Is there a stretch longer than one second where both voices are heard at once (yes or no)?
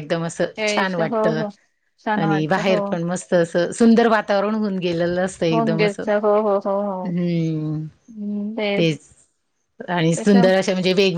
no